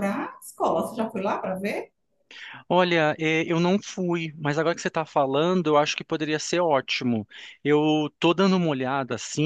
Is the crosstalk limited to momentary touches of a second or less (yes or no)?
yes